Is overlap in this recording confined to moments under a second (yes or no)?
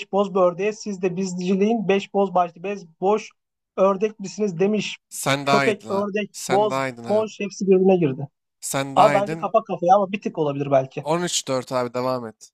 no